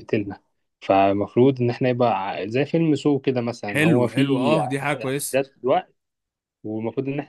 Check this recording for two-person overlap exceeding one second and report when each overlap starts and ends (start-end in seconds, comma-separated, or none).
3.7-5.4